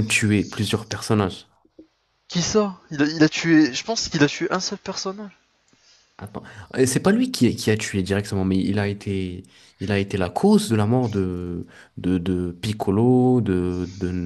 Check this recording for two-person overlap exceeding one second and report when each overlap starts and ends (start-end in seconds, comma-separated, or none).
none